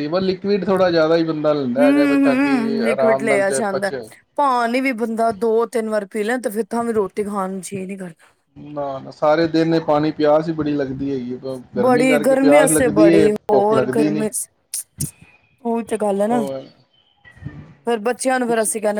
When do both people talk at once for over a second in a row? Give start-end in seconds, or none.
1.8-3.9, 12.1-14.3